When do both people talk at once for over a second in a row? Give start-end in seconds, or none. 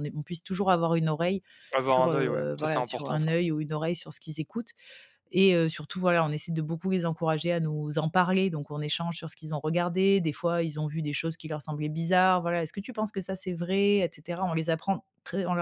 1.9-3.3